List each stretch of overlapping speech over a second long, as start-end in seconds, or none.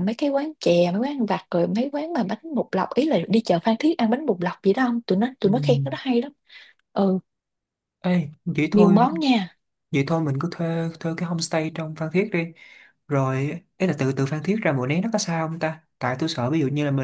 none